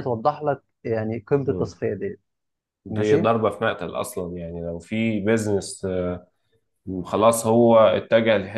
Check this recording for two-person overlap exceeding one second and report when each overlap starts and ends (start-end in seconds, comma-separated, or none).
none